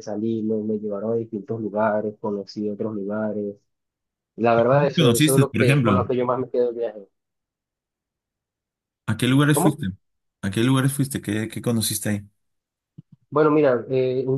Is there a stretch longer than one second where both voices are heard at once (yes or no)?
yes